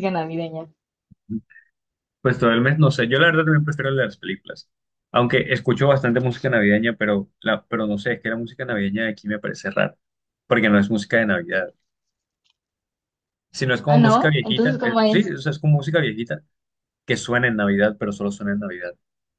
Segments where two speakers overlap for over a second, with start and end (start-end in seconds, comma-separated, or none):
13.9-15.3